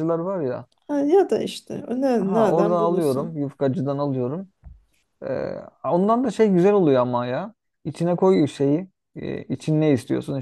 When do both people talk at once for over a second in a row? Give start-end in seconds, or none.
2.1-3.4